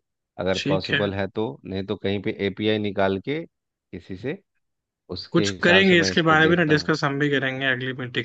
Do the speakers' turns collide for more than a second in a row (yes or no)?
yes